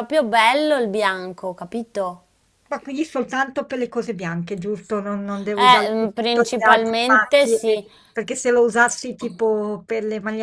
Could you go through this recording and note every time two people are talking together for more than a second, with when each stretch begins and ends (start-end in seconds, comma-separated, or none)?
5.5-7.6